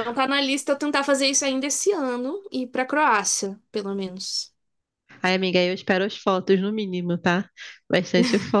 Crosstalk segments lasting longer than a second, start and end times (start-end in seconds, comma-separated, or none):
none